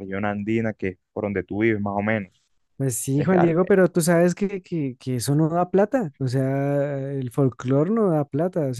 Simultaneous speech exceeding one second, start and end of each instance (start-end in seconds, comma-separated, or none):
none